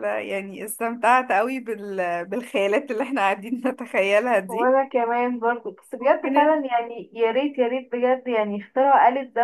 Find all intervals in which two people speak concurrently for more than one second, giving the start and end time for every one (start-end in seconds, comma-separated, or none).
none